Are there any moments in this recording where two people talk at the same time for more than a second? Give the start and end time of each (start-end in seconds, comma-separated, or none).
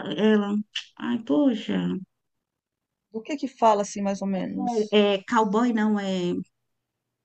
none